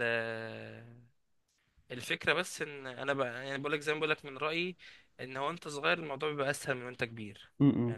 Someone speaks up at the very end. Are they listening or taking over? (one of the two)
taking over